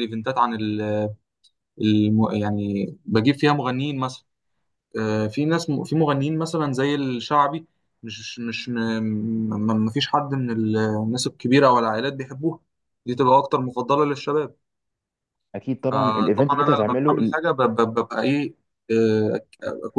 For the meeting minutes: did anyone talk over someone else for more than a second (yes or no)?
yes